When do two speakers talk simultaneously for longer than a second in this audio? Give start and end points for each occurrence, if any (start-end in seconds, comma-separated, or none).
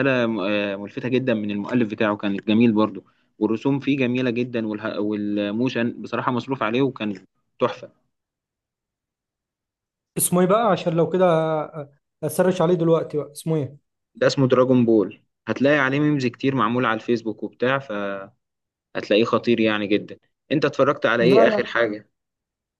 none